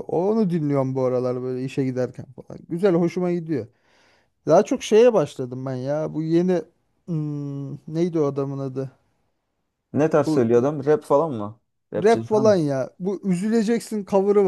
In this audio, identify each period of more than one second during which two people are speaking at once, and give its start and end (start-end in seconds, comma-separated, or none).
none